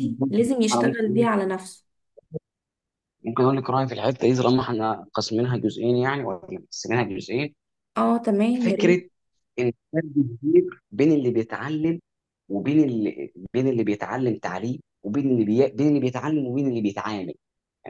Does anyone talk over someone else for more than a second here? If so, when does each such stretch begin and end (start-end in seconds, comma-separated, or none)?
none